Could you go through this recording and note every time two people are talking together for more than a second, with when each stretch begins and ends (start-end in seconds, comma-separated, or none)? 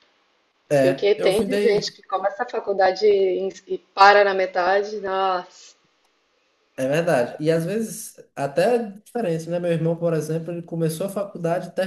0.7-2.0